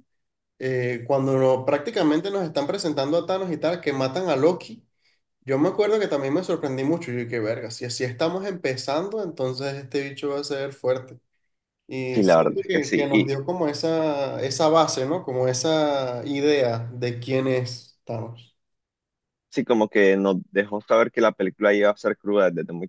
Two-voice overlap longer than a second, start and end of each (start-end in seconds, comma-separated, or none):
12.1-13.3